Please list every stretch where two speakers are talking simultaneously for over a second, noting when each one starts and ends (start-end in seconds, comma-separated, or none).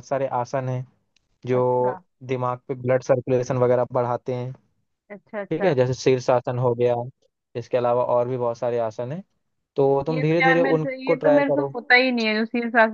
10.1-11.7